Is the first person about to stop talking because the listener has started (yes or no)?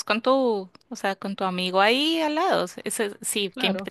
no